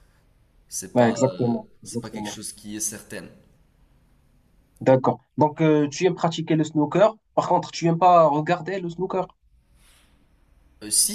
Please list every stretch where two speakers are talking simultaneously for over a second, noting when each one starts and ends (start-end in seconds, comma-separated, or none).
0.9-2.4